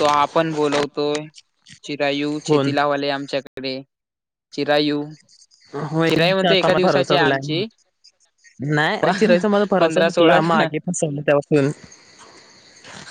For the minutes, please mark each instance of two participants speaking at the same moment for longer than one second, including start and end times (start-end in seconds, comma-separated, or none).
6.1-7.6